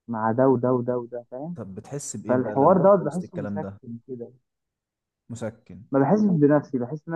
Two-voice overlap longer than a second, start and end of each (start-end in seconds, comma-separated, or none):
2.3-3.8